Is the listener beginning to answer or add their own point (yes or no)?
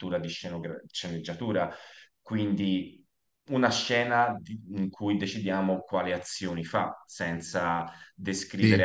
no